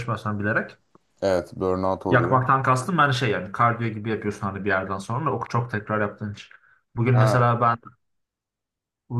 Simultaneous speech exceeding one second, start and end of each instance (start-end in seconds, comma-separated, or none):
none